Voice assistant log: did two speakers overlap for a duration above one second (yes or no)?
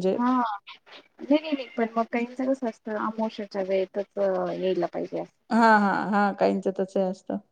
no